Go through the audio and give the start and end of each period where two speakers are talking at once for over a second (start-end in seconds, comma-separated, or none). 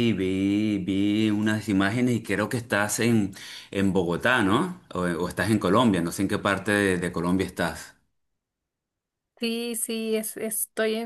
none